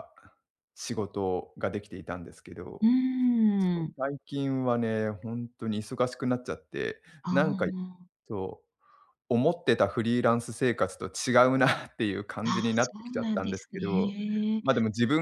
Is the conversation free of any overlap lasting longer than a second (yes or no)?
no